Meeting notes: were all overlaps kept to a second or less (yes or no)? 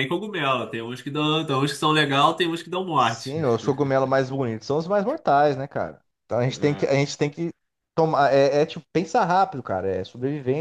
yes